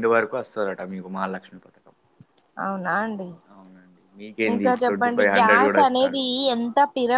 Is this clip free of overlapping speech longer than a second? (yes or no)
no